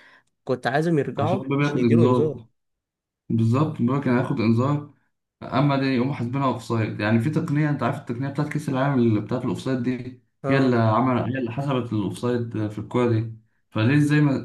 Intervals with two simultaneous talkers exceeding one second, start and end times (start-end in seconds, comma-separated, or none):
1.2-2.4